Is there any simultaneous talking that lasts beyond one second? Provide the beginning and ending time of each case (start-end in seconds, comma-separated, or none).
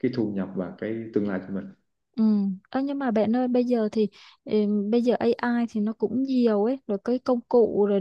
none